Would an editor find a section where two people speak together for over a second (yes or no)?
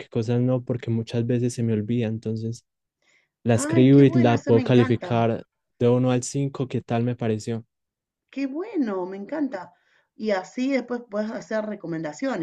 yes